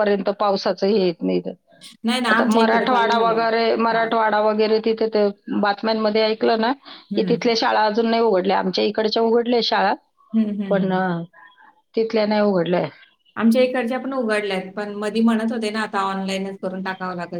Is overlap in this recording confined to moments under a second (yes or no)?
no